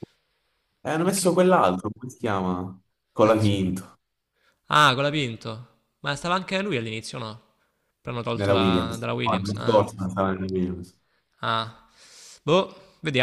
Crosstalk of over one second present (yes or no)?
yes